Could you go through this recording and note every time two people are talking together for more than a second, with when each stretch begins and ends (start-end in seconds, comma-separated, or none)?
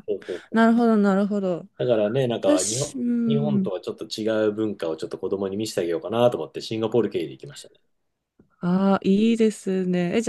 2.4-3.7